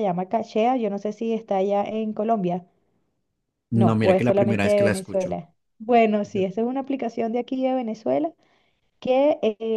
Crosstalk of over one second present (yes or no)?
yes